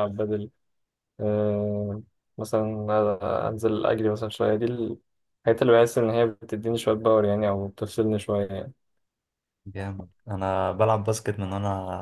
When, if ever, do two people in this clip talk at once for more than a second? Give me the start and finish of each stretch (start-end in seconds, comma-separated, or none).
none